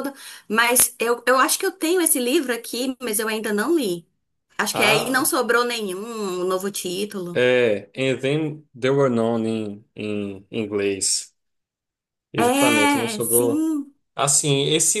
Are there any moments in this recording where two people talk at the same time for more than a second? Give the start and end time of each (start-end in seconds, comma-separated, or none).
12.4-13.6